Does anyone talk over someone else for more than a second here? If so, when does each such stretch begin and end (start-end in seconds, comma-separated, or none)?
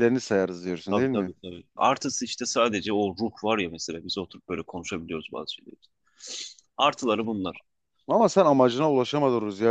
none